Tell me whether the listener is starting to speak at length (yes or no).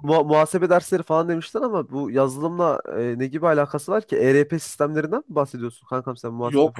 yes